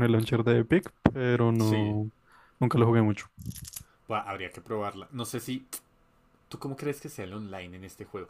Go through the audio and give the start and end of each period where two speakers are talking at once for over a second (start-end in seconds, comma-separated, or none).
none